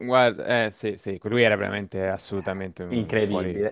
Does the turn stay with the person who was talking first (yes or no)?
no